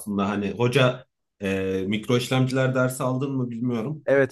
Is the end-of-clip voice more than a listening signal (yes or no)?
yes